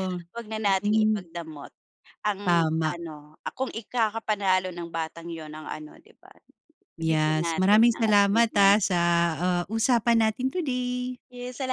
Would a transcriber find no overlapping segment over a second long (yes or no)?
no